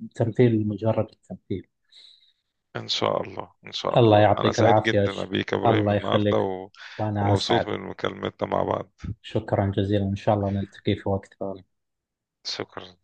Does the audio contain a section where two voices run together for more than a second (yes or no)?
yes